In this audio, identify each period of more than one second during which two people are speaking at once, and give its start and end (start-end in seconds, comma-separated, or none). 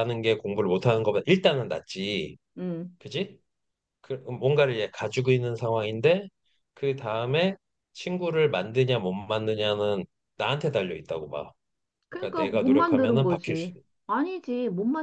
12.2-13.8